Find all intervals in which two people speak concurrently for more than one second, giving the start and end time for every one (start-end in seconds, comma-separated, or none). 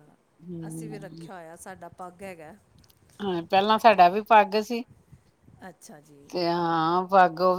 none